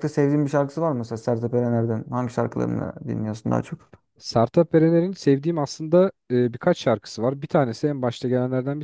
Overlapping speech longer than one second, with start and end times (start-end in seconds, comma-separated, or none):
none